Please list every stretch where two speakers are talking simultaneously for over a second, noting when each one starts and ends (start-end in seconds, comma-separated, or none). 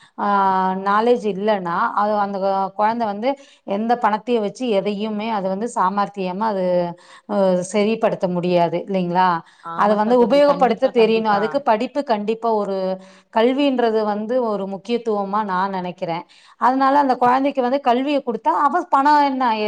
9.8-11.4